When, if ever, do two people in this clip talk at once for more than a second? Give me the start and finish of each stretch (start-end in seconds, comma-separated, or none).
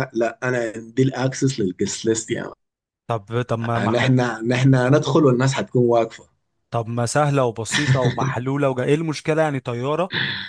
none